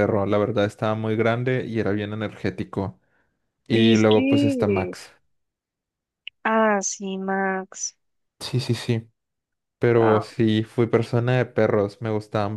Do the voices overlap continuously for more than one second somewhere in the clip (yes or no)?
yes